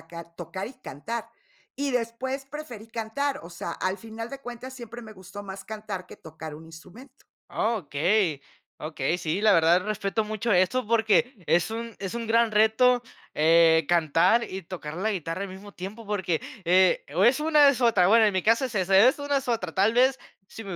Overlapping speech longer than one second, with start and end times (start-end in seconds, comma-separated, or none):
none